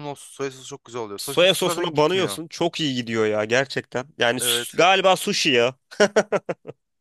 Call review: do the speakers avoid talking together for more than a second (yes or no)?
no